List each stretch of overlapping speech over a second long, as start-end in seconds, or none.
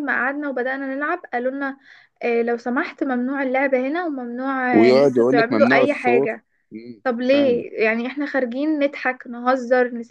4.7-6.4